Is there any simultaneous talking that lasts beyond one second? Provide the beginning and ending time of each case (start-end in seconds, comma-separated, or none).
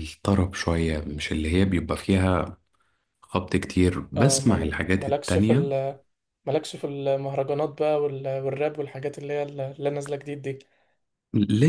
4.2-5.7